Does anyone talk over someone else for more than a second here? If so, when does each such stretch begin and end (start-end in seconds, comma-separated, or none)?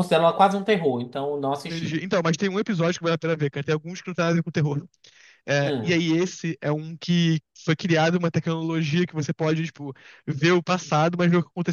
none